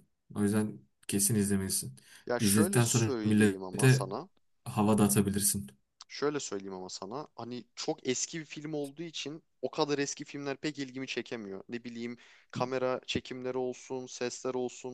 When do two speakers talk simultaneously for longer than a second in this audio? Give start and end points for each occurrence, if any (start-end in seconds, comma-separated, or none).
2.4-4.1